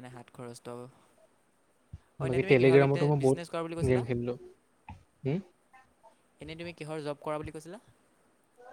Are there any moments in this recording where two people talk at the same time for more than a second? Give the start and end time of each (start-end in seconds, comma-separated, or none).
2.3-4.0